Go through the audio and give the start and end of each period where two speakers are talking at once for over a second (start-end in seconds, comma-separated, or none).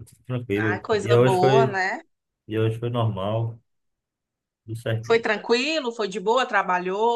0.6-1.8